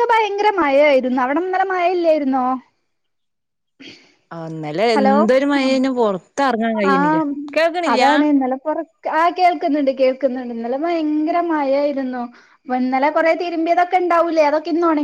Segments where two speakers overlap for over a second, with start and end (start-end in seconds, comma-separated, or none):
none